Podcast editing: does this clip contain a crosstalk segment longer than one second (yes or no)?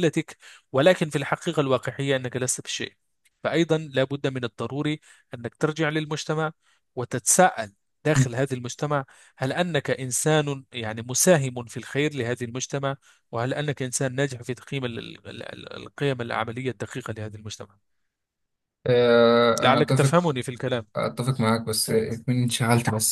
no